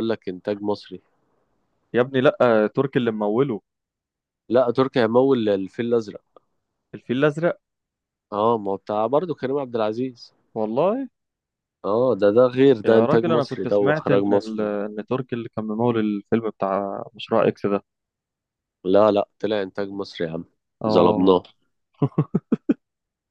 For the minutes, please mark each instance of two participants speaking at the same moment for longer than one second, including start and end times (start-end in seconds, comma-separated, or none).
12.8-14.7